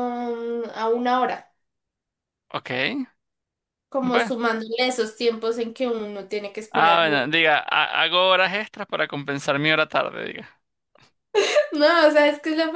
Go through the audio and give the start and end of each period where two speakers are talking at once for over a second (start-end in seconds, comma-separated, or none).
none